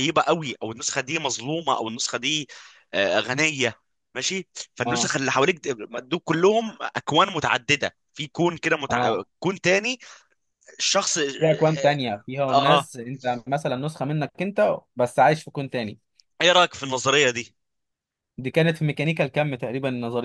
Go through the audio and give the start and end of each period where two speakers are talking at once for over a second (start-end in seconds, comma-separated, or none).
none